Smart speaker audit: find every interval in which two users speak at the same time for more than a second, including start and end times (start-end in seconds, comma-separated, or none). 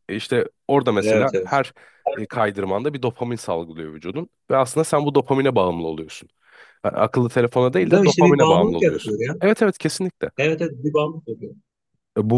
7.8-9.4